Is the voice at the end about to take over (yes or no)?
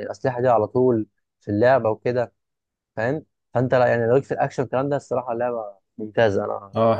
yes